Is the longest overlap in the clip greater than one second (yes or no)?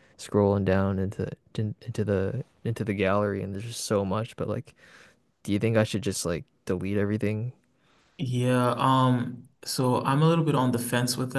no